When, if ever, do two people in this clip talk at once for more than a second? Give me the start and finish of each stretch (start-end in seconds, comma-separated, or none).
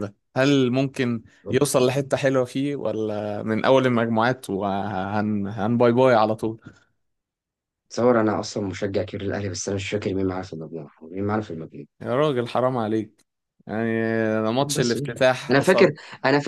14.6-16.0